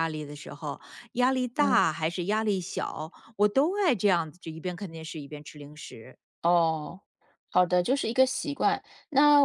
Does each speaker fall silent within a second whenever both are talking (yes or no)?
yes